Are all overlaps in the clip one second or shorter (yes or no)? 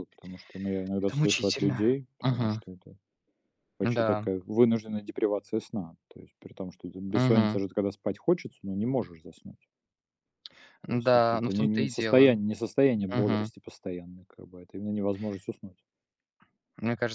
no